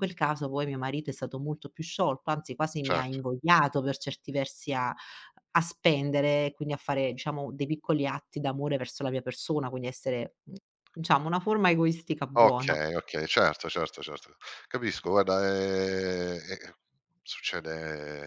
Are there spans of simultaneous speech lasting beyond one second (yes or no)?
no